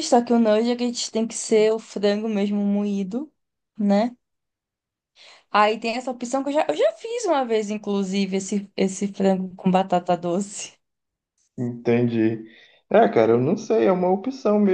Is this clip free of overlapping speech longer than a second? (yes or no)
yes